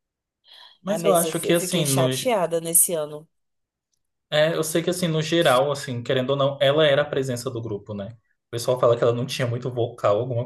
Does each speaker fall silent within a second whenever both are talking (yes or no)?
no